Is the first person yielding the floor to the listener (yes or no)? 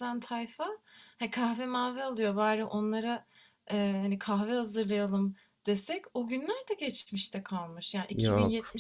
no